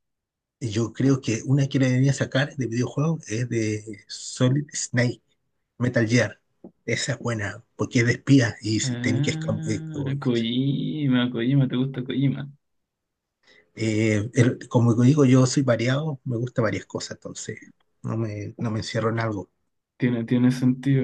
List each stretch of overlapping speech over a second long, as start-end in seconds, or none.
8.8-10.2